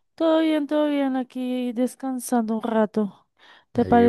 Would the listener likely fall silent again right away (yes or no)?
yes